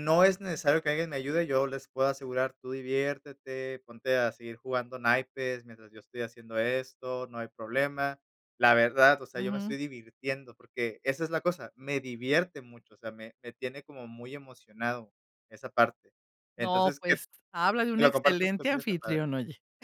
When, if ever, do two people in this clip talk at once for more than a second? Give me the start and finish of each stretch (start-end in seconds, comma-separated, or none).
18.0-19.2